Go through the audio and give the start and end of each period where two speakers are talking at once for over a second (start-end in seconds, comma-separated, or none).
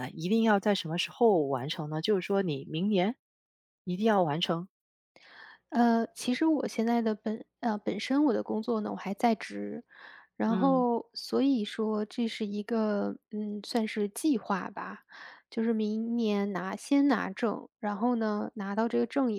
none